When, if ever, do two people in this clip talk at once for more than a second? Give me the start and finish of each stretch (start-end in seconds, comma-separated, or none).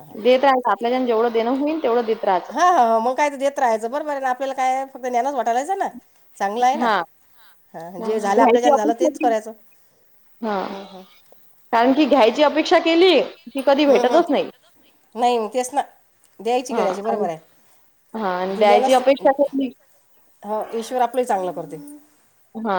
8.0-9.3